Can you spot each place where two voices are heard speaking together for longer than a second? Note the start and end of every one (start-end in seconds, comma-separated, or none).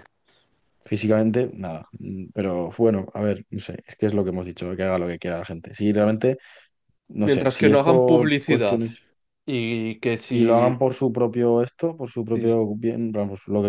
7.2-8.8